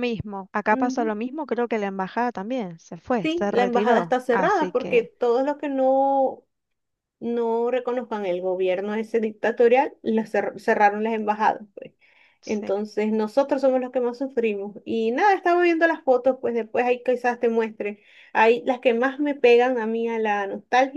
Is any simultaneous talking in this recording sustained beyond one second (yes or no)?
yes